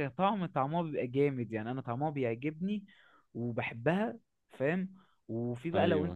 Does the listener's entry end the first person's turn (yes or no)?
no